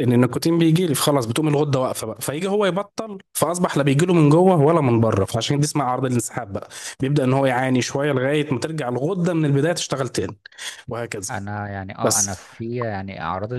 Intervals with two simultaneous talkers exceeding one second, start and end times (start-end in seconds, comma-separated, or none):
none